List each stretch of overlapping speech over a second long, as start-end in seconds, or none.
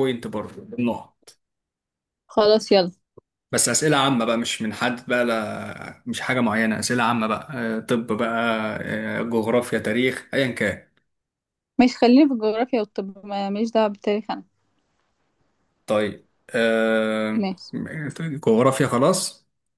none